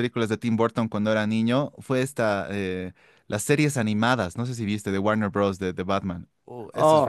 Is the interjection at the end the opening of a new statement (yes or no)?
yes